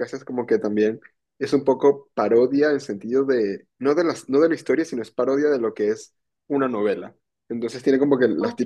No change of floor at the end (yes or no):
yes